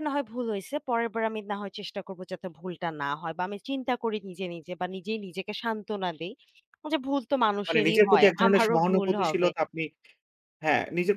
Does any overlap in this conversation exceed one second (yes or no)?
yes